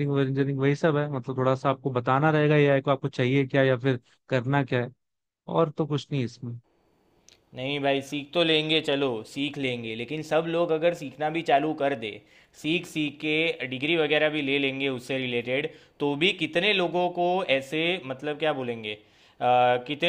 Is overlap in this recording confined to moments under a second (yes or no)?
yes